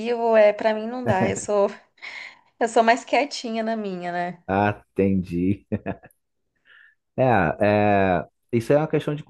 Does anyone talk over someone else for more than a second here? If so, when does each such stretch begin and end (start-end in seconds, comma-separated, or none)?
none